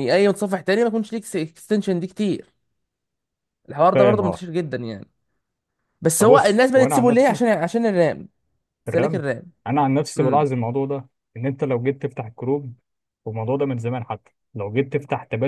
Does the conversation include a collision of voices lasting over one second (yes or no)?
yes